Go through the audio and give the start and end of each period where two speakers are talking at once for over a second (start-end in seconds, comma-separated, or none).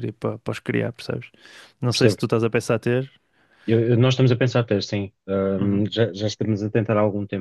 none